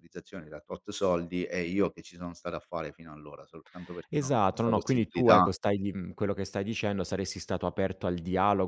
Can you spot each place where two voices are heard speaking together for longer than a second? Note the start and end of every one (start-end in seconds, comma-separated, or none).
4.1-5.5